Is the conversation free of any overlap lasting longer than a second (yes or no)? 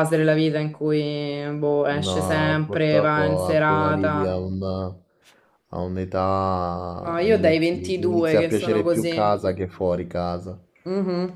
no